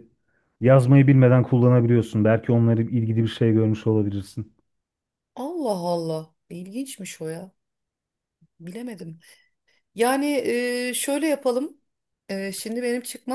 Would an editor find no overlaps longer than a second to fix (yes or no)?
yes